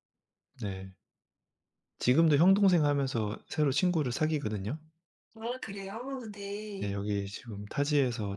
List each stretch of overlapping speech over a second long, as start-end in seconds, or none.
none